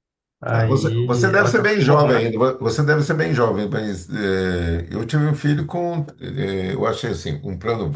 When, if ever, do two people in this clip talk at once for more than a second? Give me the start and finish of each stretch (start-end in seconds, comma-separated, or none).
0.5-2.2